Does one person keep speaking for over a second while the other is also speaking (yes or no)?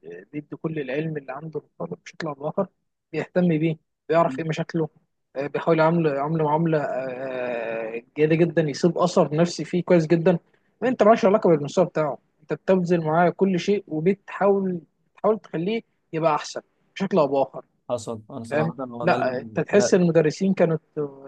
yes